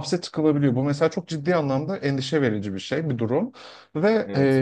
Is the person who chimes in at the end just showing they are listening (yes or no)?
yes